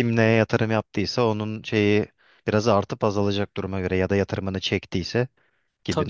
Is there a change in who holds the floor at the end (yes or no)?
yes